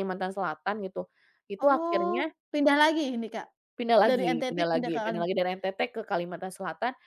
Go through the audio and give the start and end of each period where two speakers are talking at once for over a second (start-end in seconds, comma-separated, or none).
4.1-5.5